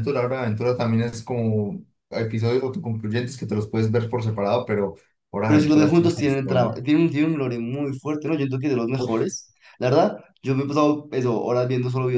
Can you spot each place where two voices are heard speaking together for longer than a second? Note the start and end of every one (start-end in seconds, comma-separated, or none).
5.5-6.8